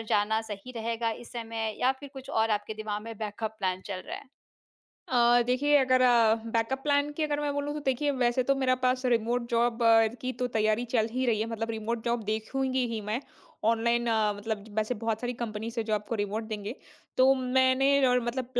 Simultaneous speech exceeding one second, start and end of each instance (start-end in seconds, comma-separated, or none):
none